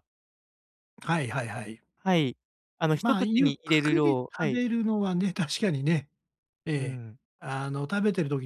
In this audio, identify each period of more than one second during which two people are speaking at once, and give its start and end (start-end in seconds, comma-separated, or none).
2.9-4.6